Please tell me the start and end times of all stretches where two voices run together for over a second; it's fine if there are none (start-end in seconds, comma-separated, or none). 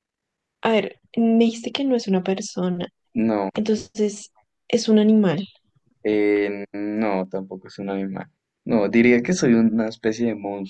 none